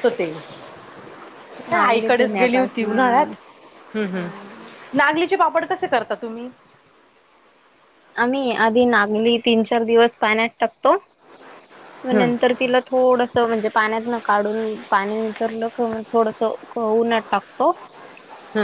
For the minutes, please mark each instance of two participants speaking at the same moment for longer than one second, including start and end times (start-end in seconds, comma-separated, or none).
1.7-3.3